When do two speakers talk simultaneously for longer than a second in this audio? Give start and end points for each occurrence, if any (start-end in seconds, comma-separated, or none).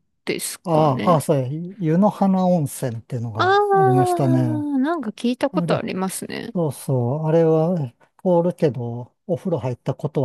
3.4-4.7